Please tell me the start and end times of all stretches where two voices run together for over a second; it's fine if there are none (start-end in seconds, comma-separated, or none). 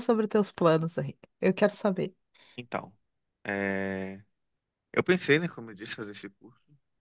none